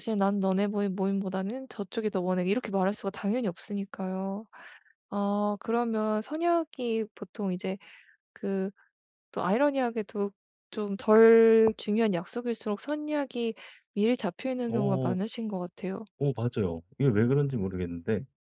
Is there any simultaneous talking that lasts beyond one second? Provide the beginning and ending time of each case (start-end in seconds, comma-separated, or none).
none